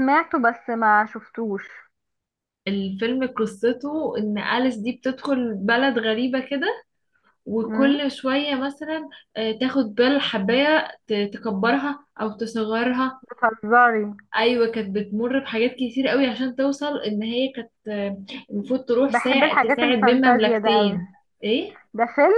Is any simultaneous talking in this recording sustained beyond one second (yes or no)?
yes